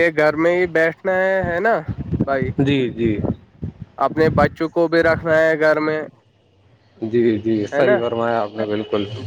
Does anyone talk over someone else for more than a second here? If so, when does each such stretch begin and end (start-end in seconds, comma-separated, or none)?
none